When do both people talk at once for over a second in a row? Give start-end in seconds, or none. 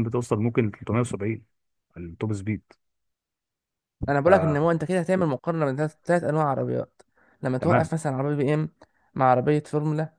none